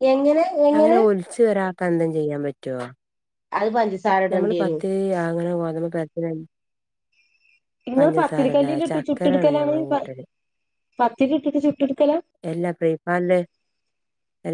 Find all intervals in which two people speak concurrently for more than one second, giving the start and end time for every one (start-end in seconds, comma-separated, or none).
8.0-9.7